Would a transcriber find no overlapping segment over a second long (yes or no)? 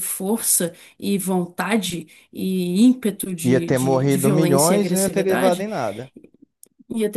no